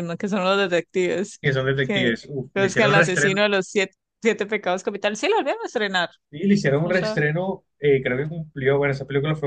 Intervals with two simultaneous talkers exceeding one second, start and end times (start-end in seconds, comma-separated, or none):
1.9-3.4